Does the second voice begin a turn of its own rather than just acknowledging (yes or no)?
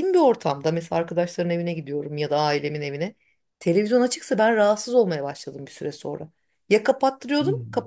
no